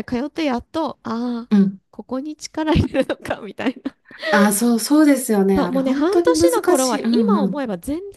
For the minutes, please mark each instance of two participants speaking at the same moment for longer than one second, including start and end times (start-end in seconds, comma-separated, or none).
5.5-7.6